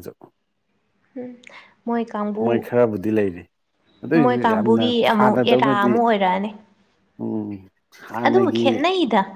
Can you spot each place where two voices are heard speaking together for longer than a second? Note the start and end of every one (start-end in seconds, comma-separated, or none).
4.1-5.9